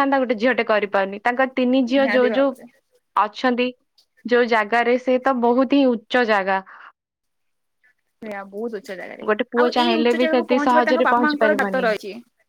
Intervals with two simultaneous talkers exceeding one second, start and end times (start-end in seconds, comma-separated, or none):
9.6-11.9